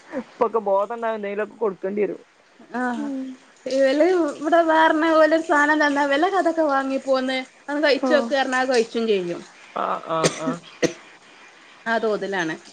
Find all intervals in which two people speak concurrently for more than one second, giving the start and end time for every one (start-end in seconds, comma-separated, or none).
none